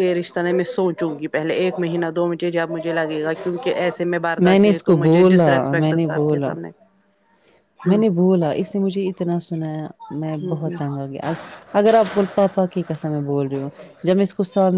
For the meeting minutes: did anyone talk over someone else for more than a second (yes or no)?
yes